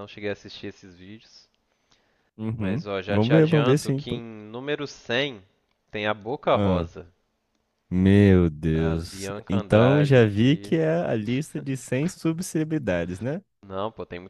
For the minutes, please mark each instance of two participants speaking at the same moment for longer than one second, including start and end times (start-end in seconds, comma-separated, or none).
2.6-4.2, 8.7-10.7